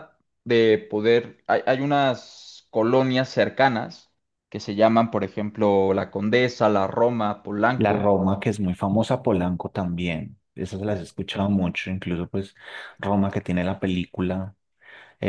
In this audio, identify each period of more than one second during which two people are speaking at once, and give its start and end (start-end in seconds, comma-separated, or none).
none